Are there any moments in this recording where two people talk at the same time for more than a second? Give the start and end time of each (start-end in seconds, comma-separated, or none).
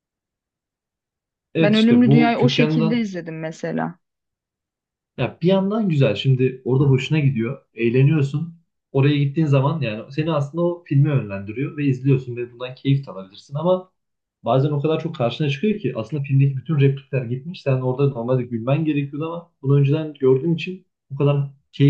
1.6-3.1